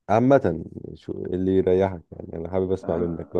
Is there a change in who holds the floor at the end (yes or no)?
yes